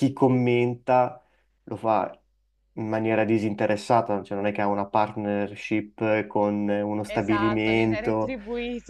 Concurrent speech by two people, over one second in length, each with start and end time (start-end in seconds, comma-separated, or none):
7.1-8.4